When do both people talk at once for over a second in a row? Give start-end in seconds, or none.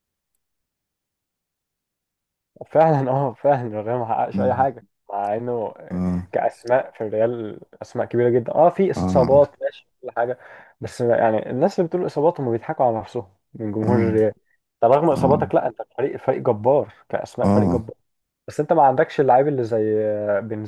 none